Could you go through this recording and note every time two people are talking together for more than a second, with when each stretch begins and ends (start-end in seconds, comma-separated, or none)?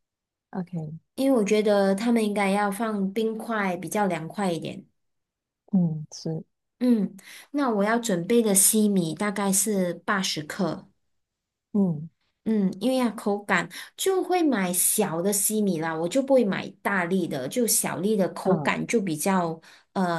none